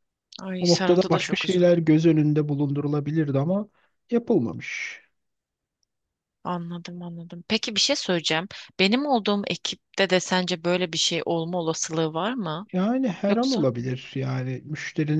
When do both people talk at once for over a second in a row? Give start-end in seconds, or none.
0.6-1.8